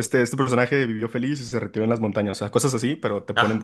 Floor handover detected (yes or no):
no